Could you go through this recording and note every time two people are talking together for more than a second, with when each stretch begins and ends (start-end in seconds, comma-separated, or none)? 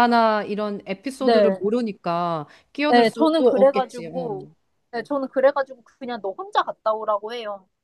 2.9-4.5